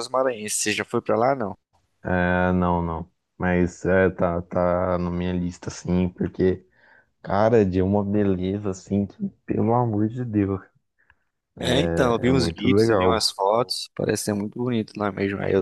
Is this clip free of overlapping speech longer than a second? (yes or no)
no